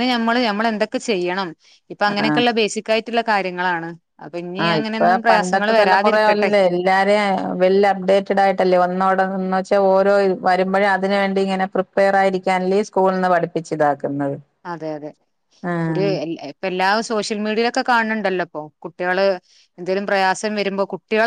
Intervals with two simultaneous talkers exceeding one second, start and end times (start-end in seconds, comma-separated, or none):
4.6-6.5